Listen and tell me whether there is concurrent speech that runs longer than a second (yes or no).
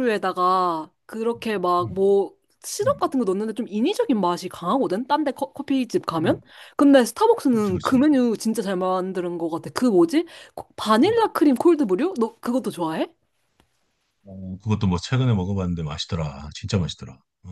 no